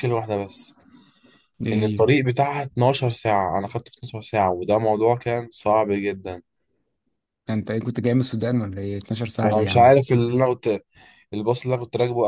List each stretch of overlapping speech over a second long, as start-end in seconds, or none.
none